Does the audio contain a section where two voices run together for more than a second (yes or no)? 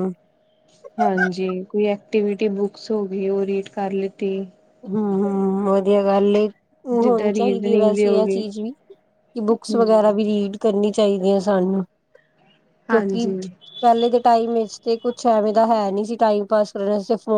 yes